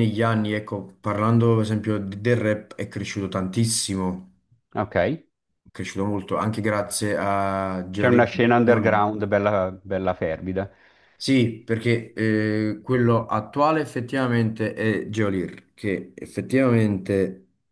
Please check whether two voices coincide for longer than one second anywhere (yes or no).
yes